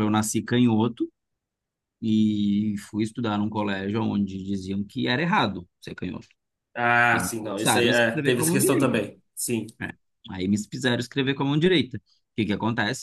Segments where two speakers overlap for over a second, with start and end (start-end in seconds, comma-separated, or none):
7.1-9.0